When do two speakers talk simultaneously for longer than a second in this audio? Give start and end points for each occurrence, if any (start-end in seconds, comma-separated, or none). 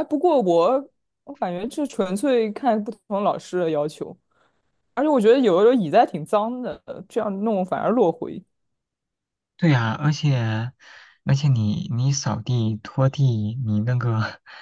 none